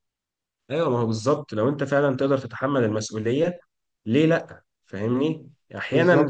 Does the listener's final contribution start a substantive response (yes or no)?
no